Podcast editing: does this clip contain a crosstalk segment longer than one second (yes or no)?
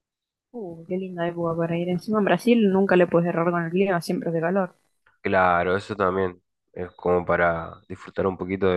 no